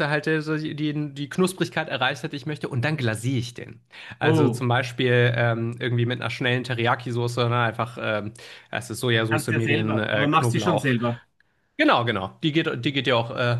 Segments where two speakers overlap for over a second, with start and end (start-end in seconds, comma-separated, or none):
9.3-10.9